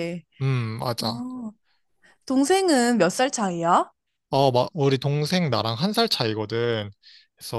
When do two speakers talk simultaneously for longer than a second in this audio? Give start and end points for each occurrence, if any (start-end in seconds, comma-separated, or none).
none